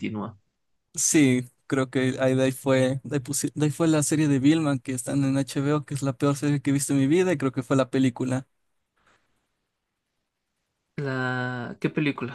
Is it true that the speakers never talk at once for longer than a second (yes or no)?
yes